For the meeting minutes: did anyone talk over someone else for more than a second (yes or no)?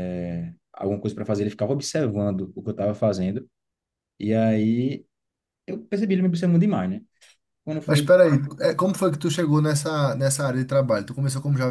no